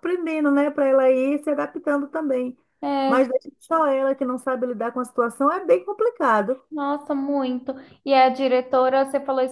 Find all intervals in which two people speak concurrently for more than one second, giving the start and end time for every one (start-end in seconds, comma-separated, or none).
none